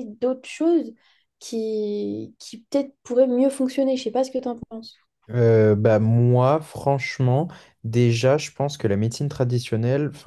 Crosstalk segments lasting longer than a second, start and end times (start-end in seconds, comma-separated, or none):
none